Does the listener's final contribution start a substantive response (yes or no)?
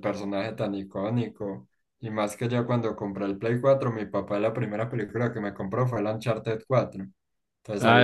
yes